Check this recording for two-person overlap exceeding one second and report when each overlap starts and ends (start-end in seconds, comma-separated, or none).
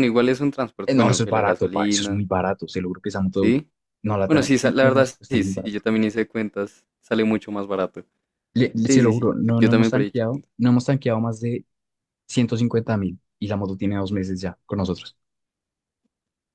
0.8-2.2, 4.3-5.8, 8.8-10.5